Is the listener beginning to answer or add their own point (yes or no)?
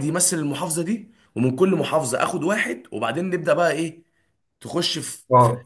yes